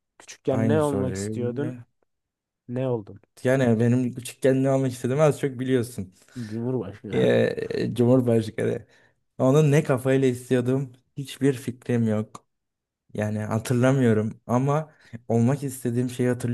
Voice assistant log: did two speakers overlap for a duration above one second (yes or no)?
yes